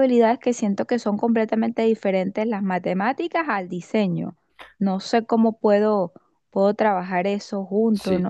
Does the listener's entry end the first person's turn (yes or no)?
yes